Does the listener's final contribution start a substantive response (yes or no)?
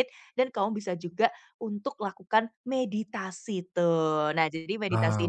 no